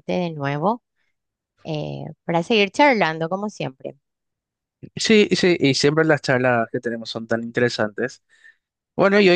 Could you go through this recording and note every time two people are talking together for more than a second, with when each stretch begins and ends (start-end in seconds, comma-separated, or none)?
none